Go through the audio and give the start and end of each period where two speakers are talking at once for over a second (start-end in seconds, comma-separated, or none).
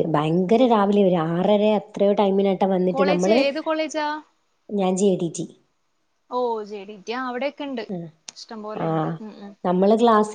none